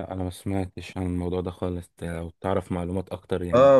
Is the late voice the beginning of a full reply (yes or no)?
yes